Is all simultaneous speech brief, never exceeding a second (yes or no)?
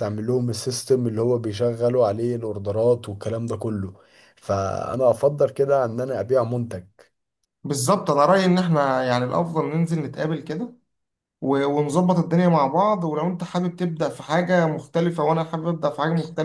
yes